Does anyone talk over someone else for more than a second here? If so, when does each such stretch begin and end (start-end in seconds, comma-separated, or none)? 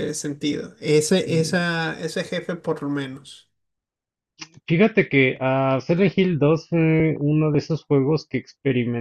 none